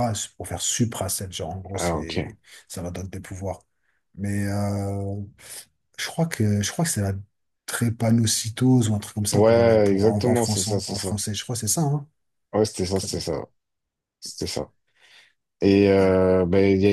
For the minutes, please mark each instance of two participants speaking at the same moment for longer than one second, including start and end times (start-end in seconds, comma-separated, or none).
9.3-11.2